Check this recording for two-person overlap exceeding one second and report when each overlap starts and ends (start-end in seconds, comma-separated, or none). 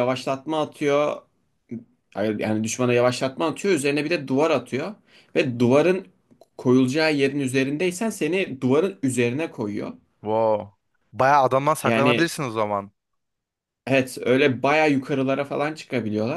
none